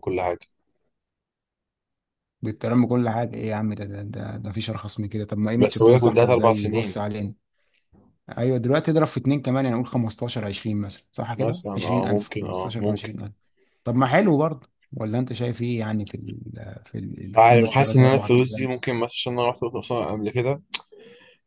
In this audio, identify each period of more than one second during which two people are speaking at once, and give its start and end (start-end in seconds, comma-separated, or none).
5.6-7.0, 11.3-13.1, 17.4-18.7